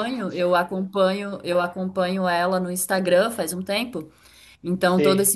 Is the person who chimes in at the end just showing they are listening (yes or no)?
yes